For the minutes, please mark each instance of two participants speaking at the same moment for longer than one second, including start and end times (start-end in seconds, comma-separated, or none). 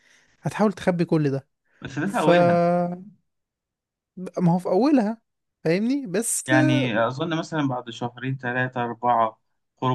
none